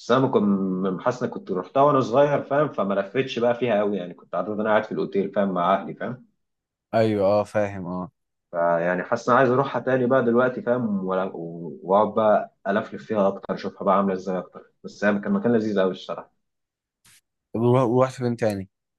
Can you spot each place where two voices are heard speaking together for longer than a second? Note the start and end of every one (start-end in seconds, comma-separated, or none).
none